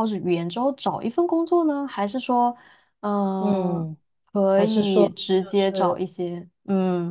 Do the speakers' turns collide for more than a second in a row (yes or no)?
yes